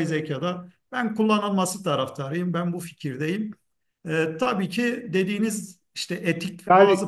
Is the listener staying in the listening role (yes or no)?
yes